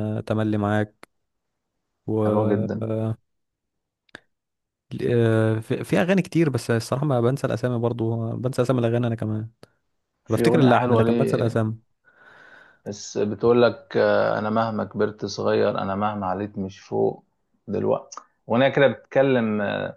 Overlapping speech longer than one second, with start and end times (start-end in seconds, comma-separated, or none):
10.3-11.6